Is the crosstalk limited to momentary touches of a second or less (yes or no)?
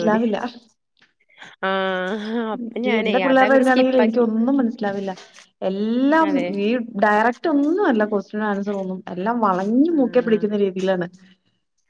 no